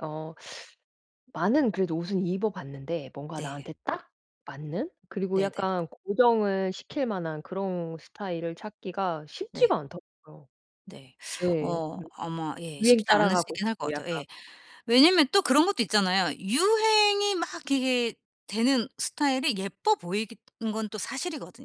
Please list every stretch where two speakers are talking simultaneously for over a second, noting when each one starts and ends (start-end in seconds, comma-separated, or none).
12.8-14.2